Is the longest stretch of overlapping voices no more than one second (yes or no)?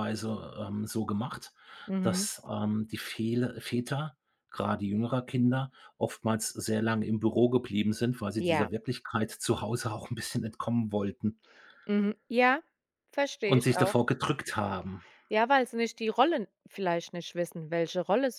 yes